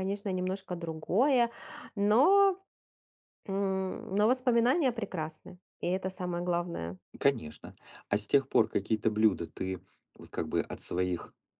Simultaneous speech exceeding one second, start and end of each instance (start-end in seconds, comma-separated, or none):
none